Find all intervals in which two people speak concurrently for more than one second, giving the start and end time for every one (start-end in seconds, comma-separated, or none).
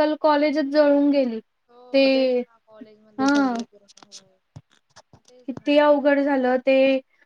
none